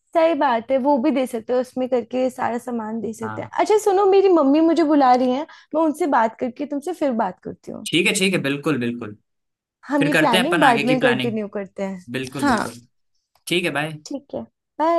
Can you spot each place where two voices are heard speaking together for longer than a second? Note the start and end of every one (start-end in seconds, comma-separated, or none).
10.0-11.4